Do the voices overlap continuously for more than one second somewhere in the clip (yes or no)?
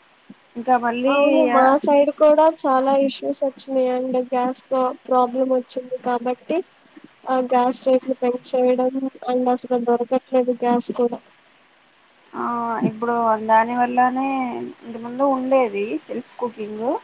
no